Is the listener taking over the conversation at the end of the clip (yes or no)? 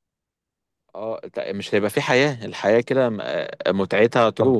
yes